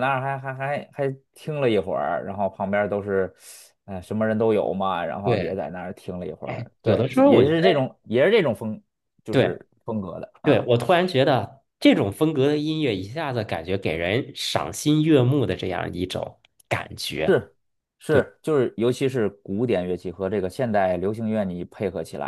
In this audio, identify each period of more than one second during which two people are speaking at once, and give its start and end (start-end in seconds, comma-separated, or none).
6.4-7.8